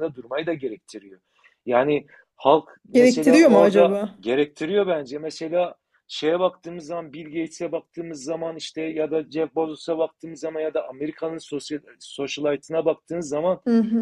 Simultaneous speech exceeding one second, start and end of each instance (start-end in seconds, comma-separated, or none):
2.9-4.2